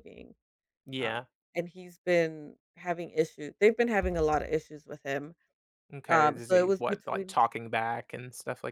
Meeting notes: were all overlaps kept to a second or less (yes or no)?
no